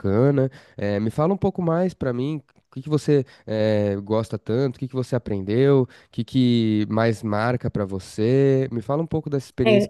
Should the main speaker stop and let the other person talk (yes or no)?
no